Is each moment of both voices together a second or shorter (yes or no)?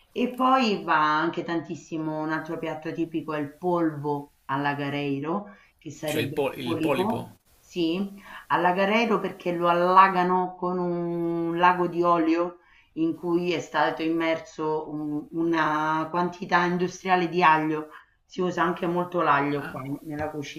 no